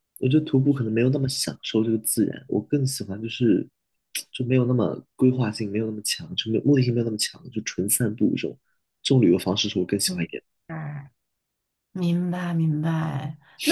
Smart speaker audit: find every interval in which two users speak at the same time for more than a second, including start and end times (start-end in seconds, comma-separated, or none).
none